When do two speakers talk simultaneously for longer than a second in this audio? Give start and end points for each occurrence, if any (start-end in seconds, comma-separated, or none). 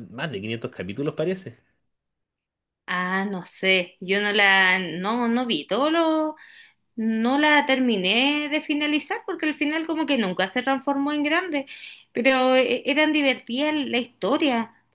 none